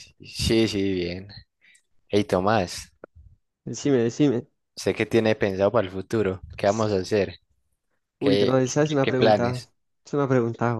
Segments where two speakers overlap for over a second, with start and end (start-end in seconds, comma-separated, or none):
8.2-9.6